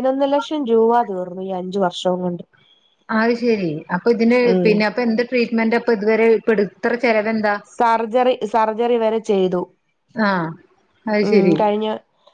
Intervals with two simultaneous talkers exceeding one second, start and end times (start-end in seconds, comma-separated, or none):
none